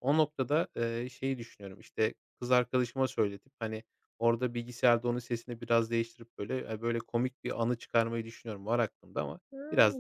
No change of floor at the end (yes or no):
no